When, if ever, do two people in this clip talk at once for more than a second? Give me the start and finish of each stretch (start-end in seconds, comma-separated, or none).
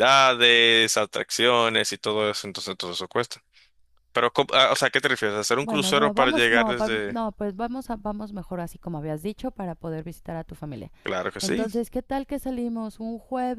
5.6-7.2